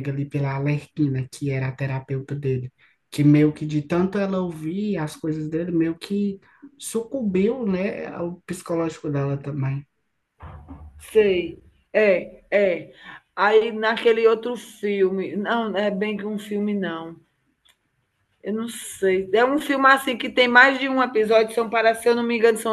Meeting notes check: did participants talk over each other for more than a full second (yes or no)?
no